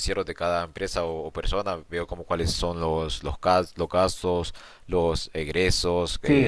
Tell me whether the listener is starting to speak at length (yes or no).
yes